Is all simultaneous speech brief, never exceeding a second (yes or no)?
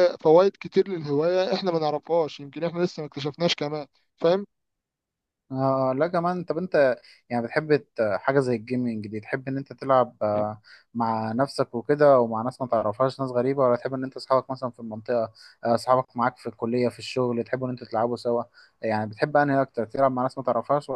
yes